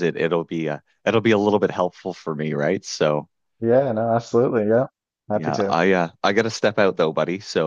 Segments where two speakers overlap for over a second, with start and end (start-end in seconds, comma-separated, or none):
none